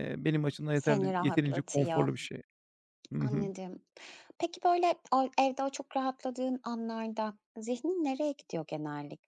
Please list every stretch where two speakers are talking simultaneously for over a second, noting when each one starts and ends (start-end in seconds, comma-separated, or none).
0.7-2.1